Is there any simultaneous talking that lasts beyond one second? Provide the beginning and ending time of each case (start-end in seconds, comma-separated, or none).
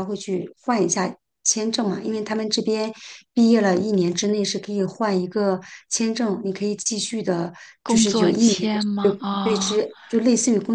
7.8-9.8